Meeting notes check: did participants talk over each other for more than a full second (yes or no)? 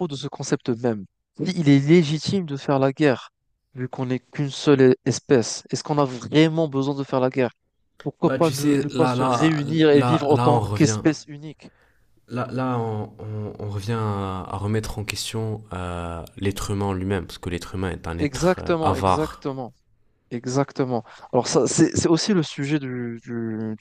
yes